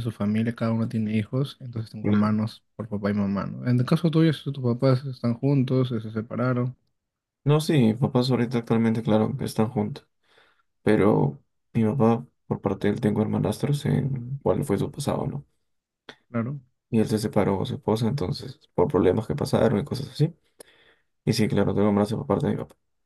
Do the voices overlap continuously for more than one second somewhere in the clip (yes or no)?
no